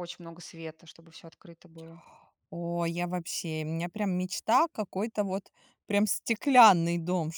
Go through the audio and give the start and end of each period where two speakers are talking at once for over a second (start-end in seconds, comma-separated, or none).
none